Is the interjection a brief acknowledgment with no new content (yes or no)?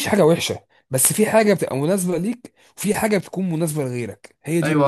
no